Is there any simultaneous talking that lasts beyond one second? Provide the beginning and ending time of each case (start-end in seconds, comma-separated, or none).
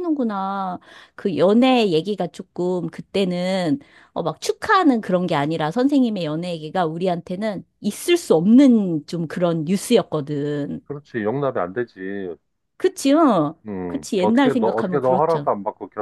13.7-15.5